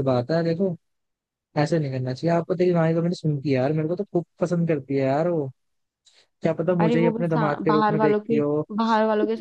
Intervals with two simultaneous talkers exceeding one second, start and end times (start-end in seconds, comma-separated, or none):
6.8-8.4